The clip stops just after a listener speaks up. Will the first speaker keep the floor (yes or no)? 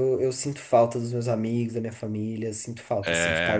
no